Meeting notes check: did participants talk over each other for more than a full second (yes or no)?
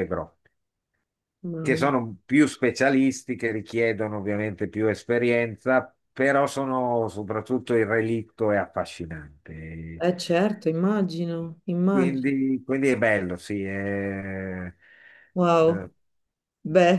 no